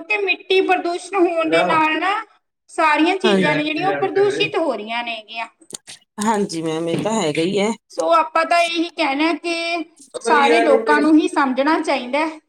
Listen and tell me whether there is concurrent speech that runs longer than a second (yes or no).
yes